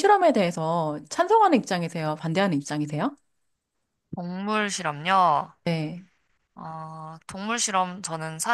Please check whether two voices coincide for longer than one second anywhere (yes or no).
no